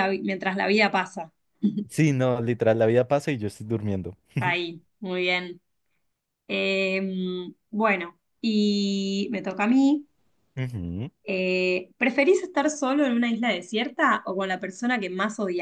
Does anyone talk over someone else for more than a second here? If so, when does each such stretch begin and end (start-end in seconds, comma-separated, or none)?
none